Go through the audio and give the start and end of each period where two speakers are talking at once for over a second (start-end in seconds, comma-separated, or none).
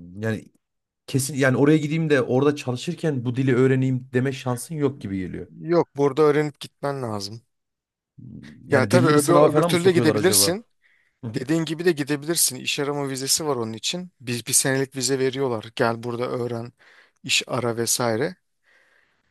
8.7-10.6